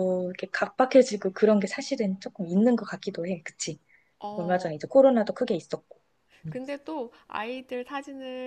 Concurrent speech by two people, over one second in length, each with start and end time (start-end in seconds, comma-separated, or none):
none